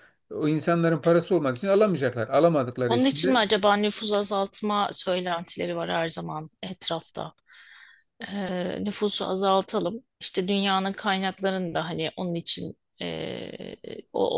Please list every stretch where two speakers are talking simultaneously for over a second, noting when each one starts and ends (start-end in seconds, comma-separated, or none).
none